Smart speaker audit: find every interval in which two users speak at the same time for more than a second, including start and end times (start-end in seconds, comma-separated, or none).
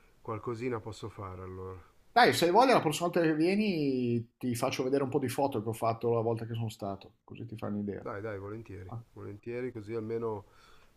none